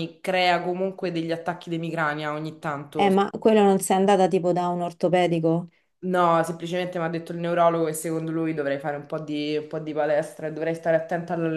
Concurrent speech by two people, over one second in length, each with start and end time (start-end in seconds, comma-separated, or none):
none